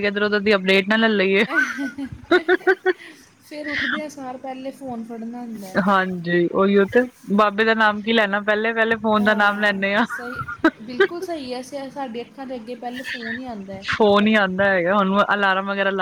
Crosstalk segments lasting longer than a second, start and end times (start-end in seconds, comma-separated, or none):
none